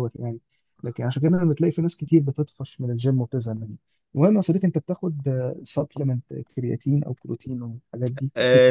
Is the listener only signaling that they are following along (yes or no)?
no